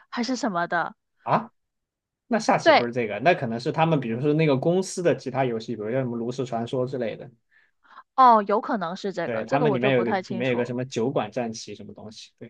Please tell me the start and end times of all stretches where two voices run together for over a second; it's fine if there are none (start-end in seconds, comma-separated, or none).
9.2-10.8